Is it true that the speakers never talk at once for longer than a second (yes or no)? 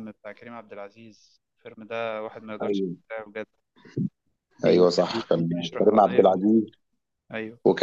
no